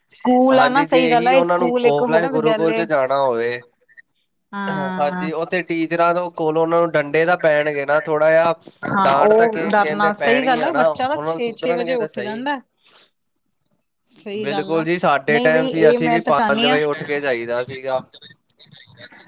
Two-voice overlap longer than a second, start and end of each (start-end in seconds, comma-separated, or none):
0.6-2.8, 9.0-12.4, 15.3-16.8